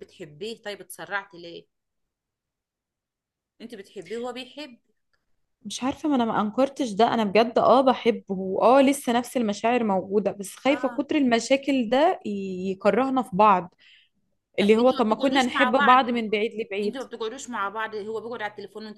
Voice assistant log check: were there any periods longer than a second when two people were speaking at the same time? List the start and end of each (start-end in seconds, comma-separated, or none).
14.6-16.0